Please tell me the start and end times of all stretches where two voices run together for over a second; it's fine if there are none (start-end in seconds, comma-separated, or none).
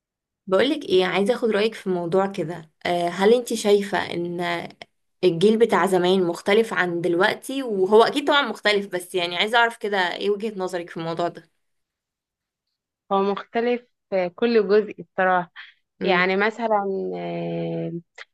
none